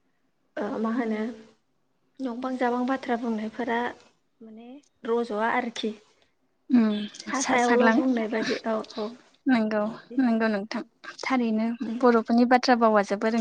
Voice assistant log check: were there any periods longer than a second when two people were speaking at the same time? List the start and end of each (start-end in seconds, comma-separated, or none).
none